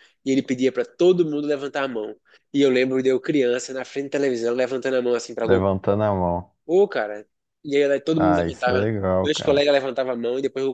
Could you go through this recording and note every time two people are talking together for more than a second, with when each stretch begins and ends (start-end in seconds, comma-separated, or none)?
8.2-9.7